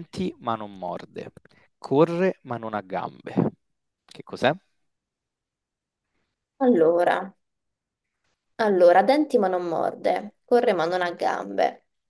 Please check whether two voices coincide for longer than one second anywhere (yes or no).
no